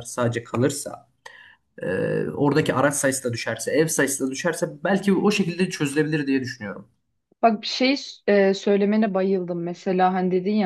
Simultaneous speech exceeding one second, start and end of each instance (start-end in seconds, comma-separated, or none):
none